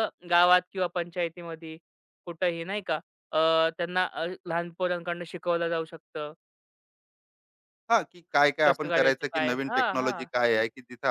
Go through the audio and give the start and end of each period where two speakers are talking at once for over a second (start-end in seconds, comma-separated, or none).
8.7-10.3